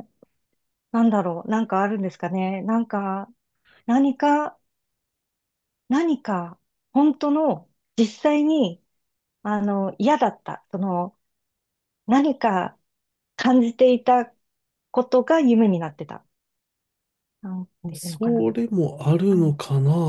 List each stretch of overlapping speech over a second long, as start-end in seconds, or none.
none